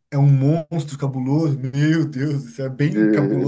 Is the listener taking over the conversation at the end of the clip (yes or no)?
no